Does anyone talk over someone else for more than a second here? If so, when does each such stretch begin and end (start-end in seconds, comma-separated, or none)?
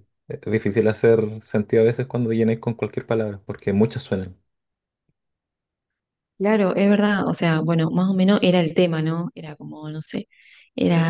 none